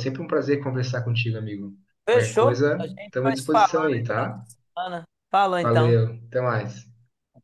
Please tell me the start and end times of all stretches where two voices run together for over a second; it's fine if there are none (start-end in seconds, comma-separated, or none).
2.1-4.5